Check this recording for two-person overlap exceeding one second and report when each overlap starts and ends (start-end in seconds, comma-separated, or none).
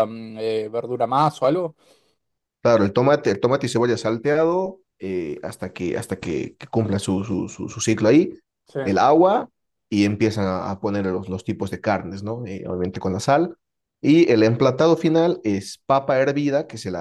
none